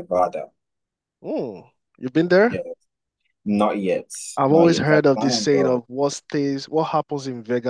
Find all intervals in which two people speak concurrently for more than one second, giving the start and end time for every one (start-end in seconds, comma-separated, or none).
4.5-5.8